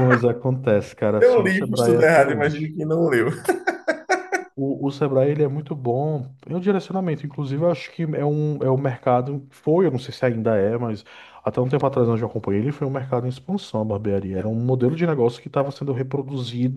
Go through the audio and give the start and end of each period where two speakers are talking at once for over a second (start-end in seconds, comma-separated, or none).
1.2-2.8